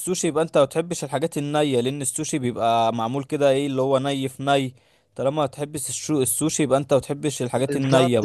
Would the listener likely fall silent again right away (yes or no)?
no